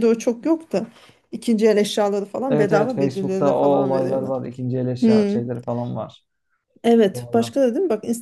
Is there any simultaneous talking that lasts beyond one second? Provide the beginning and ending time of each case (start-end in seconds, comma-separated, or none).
2.5-4.3